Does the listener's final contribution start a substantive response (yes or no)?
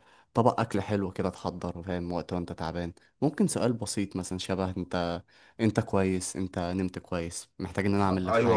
yes